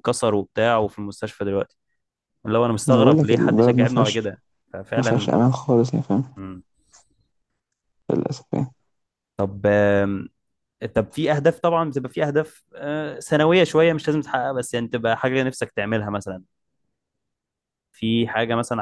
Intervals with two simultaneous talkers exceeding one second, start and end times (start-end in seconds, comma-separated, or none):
2.9-4.2